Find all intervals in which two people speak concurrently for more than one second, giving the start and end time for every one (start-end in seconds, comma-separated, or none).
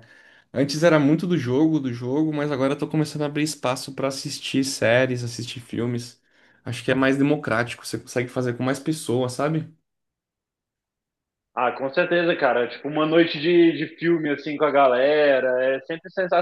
none